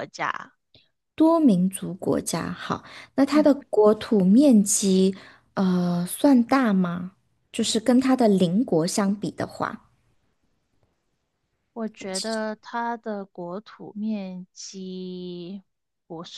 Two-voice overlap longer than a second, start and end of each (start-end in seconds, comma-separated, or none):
none